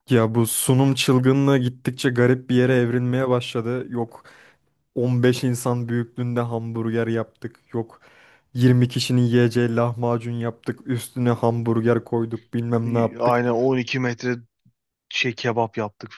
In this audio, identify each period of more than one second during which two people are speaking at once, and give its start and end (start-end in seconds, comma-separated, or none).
none